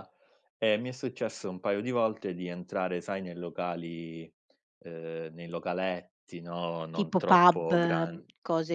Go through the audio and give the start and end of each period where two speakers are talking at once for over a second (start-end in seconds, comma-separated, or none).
7.0-8.2